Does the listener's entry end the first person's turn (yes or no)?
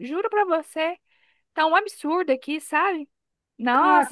no